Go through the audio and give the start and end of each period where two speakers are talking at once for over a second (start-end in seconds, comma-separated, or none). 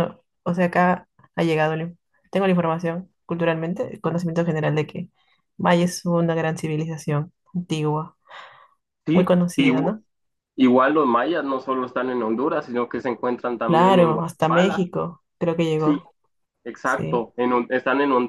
13.7-14.9